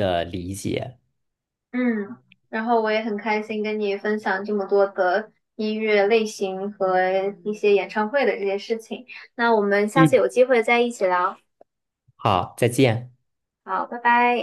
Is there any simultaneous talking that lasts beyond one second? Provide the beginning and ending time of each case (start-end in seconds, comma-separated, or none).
none